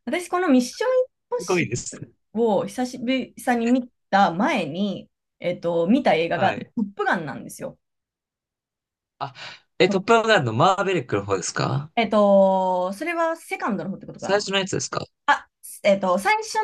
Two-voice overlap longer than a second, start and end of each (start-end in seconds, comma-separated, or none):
none